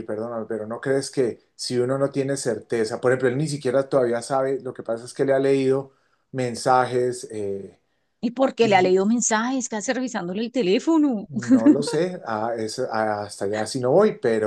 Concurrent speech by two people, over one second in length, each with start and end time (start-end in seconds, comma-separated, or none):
none